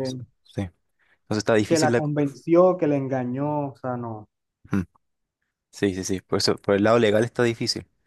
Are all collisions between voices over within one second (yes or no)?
yes